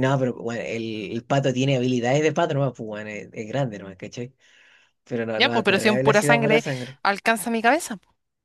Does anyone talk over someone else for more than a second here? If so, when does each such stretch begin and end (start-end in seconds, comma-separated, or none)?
5.3-6.6